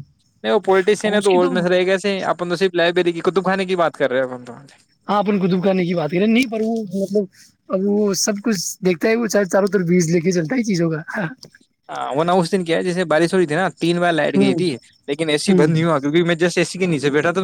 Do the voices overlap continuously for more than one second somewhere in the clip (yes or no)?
no